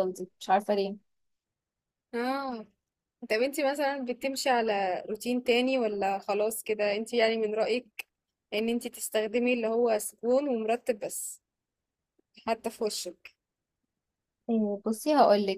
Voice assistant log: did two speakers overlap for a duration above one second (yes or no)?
no